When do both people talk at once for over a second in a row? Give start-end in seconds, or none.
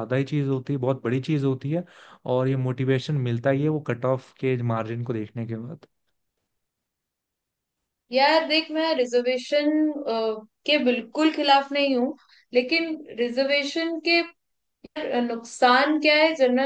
none